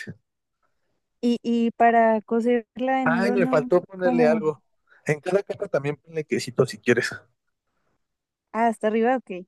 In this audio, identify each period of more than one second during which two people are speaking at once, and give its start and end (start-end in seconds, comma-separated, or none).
3.0-4.4